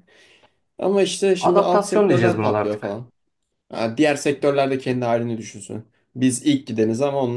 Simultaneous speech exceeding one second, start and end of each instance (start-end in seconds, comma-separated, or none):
1.4-3.0